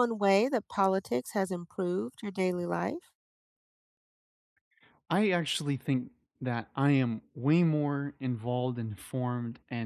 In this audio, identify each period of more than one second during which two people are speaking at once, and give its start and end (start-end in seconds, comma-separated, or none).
none